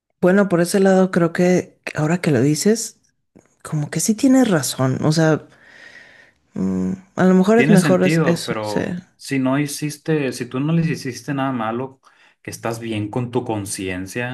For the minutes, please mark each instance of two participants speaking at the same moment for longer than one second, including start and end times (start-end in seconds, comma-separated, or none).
7.5-8.8